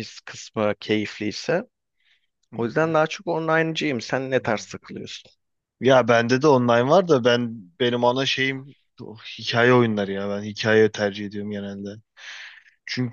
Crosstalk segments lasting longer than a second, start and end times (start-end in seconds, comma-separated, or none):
none